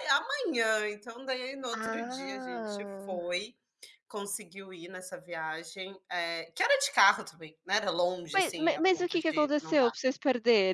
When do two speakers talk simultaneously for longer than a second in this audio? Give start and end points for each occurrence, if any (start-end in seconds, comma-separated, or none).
1.7-3.2, 8.3-9.9